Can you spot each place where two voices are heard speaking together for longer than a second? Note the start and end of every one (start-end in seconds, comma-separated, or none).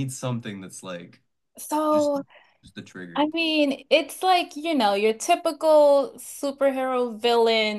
none